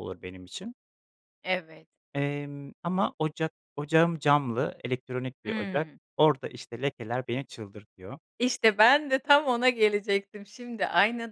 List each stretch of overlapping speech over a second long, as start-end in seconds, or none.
none